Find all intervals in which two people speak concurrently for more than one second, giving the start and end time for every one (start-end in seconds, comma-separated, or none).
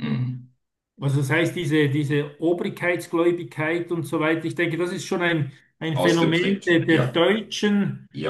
5.9-7.2